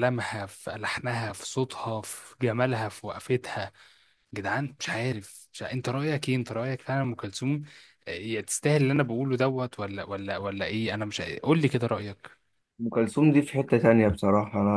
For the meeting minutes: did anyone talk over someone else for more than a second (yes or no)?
no